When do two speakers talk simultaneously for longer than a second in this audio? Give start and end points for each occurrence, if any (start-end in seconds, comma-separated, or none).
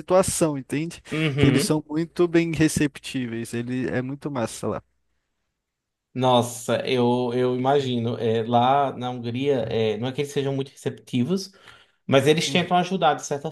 none